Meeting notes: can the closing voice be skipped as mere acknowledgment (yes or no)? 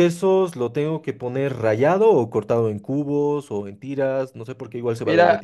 no